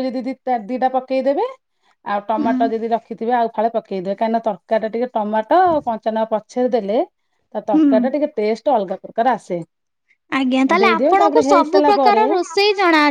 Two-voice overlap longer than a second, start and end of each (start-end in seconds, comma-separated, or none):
10.8-12.2